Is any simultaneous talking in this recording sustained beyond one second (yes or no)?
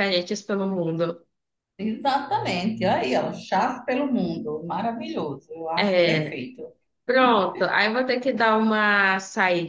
no